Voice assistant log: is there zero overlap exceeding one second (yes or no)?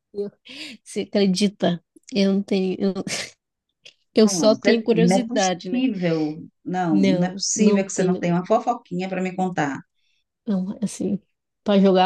no